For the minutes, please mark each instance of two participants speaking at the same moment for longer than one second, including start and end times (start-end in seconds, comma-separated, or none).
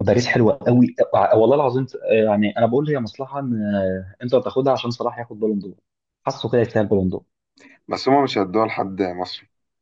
none